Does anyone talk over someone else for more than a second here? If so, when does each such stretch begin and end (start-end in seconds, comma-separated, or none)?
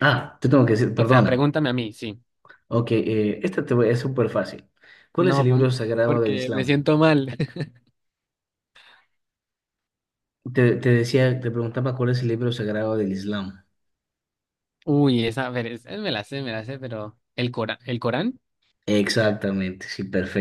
5.2-6.9